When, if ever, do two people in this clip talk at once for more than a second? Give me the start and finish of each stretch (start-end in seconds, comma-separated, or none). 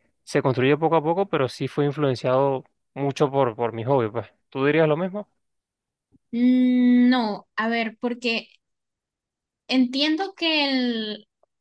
none